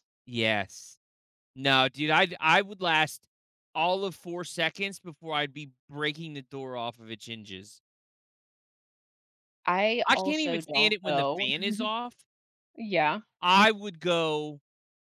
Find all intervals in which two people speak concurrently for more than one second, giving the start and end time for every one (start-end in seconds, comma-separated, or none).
10.1-11.5